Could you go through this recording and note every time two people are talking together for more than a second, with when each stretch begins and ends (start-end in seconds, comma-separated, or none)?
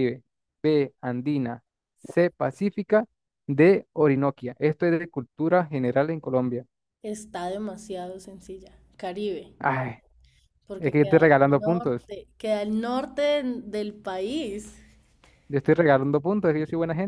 10.8-12.1